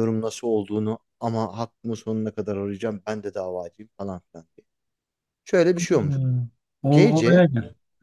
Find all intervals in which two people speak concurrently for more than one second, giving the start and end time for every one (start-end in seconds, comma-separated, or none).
none